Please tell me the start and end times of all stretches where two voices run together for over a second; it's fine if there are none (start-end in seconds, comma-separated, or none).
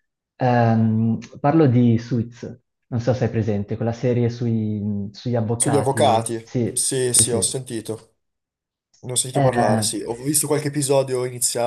5.6-7.5